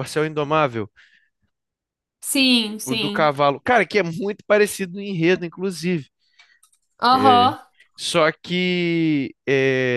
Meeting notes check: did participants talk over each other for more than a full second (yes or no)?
no